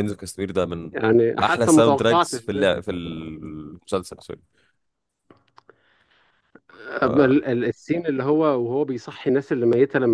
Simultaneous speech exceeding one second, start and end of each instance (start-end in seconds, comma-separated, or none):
1.4-2.8